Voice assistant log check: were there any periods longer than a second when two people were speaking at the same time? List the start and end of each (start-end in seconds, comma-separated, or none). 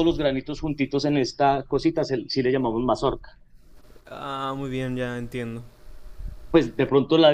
none